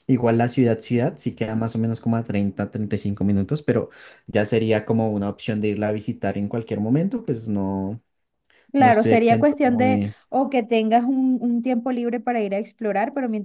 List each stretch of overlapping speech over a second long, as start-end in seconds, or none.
8.8-10.1